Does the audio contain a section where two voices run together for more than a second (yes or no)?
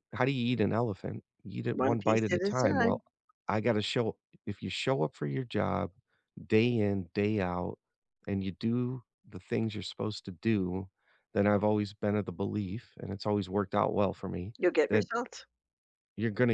yes